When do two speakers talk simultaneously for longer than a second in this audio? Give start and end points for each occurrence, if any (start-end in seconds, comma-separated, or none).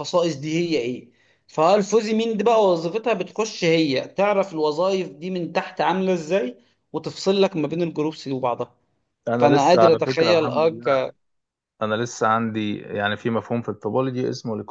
9.4-11.0